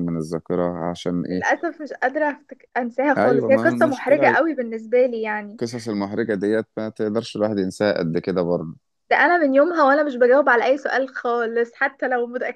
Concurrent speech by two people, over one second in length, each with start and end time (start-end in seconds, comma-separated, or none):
3.2-4.4